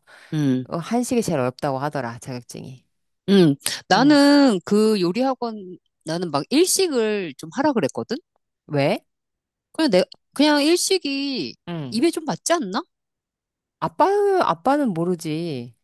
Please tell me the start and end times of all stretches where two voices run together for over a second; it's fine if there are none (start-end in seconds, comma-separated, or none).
none